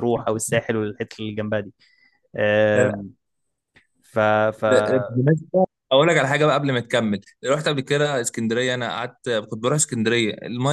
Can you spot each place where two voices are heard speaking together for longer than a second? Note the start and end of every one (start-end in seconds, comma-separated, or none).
none